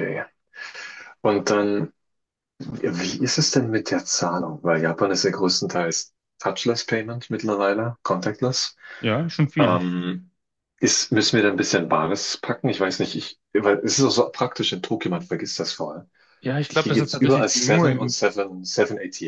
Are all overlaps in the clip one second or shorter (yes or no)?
no